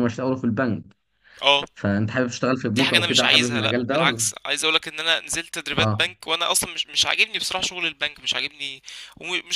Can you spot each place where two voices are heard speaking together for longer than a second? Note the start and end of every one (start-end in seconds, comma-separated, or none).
2.8-4.3